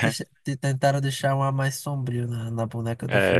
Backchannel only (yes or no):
no